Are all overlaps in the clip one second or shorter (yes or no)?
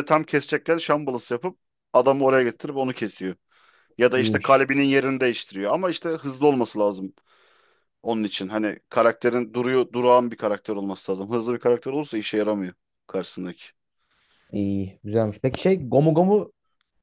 yes